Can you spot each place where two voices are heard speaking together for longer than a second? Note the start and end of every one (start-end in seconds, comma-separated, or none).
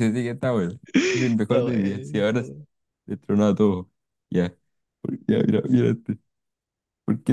1.1-2.5